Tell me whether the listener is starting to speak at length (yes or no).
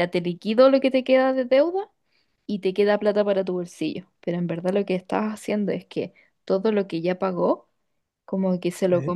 no